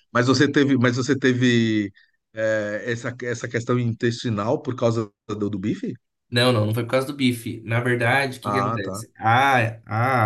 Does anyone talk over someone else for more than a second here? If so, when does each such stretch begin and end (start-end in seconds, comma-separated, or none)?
none